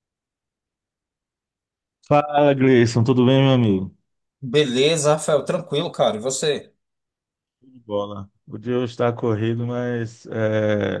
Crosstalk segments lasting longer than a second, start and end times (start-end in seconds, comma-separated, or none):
none